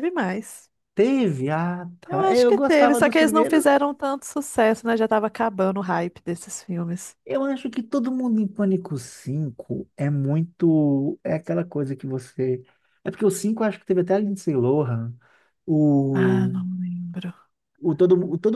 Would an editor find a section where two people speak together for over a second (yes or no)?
yes